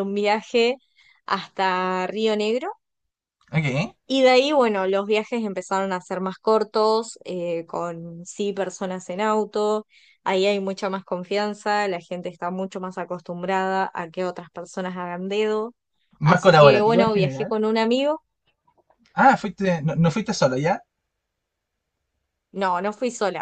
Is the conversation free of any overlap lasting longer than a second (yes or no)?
no